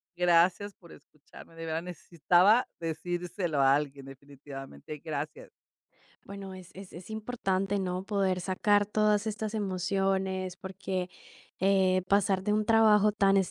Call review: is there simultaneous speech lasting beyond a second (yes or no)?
no